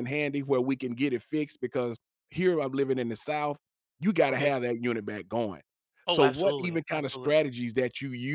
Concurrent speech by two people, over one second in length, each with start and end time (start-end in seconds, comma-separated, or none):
6.1-7.4